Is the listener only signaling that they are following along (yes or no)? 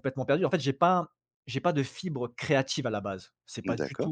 yes